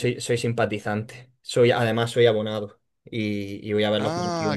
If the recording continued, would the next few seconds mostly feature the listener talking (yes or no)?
yes